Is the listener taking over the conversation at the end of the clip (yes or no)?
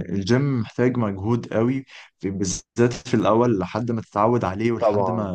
no